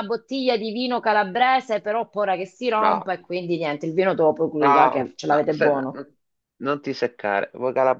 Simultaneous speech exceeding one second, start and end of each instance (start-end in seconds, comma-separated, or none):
4.6-5.9